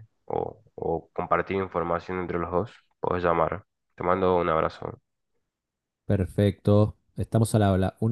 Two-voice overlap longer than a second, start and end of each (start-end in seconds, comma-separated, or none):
none